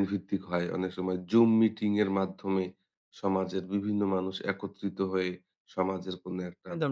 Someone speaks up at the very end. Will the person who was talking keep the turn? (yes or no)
yes